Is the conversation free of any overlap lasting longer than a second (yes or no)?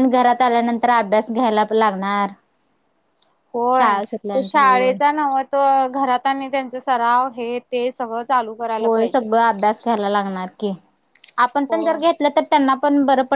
no